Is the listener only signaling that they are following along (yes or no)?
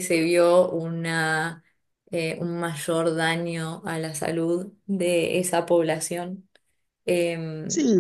no